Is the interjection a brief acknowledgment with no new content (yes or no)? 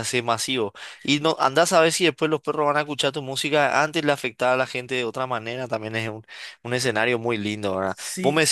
yes